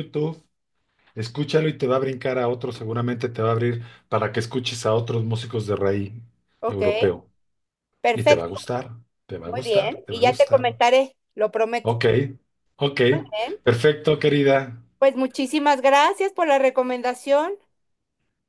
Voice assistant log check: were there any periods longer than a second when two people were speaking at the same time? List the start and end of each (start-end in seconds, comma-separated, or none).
9.4-10.7